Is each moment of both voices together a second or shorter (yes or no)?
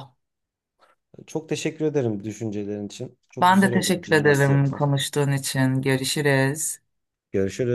no